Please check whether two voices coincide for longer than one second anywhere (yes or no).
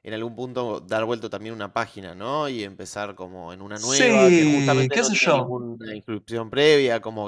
yes